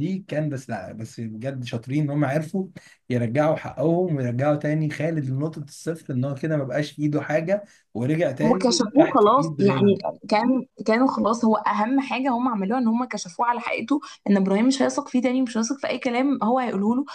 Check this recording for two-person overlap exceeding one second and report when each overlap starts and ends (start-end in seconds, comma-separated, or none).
8.4-10.0